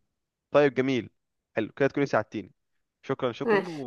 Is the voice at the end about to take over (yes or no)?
no